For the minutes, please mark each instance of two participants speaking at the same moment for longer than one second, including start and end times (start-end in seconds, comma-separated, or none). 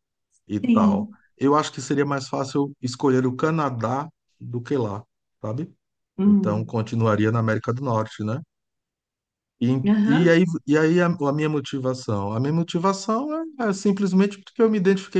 none